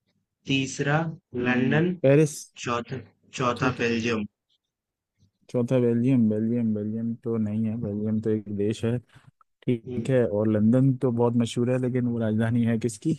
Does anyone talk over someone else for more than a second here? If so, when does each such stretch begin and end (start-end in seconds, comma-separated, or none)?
none